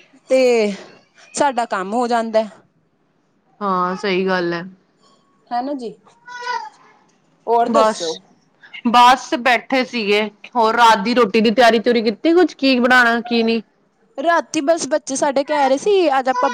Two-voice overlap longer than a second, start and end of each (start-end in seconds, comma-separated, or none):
none